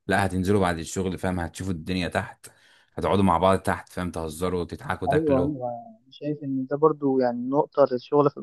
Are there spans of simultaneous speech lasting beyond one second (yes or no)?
no